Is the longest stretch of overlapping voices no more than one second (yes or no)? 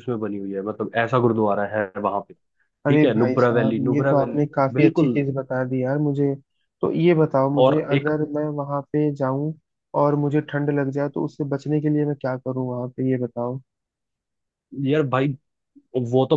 no